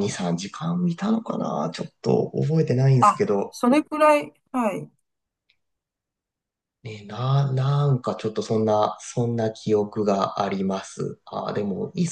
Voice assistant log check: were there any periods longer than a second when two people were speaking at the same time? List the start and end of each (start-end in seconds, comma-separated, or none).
none